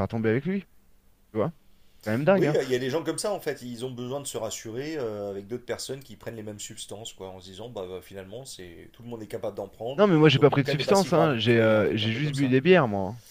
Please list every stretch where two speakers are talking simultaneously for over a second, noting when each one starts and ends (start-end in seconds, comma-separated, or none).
10.0-12.6